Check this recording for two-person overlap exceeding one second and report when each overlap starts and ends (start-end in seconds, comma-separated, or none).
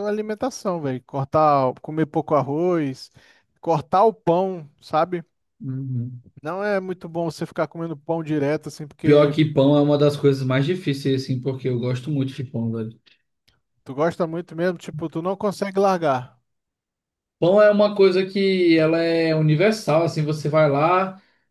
none